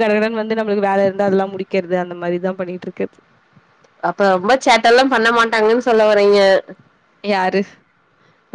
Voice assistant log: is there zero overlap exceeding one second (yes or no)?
yes